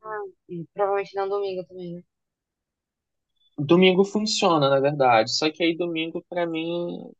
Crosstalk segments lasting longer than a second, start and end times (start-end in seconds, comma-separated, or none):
none